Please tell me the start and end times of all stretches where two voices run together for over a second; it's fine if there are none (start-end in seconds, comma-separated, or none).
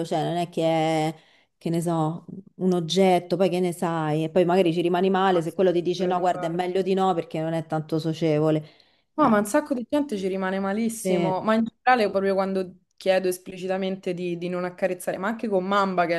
5.2-6.7